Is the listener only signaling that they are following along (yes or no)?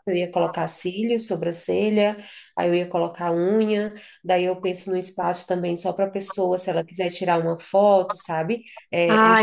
no